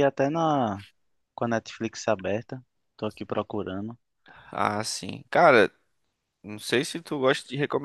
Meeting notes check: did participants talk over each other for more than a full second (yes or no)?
no